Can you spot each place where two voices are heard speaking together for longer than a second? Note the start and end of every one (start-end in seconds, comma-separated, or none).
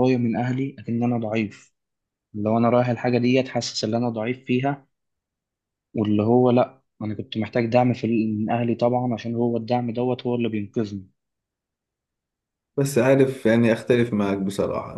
none